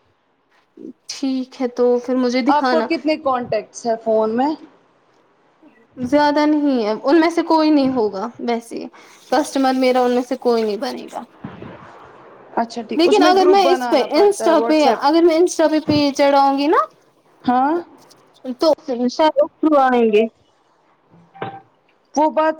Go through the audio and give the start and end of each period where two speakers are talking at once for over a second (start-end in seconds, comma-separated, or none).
13.0-15.0